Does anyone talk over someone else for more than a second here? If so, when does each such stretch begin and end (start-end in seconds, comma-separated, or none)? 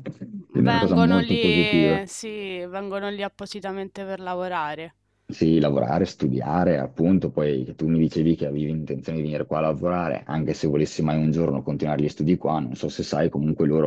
0.6-2.0